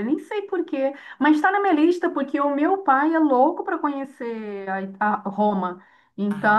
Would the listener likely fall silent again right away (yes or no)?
yes